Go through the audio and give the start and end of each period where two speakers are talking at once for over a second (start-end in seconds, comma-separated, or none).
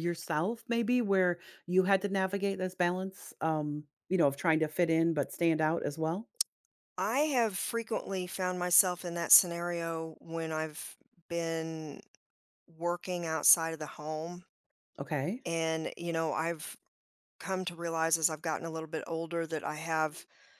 none